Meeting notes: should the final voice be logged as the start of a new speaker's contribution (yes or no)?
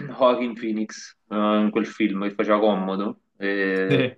no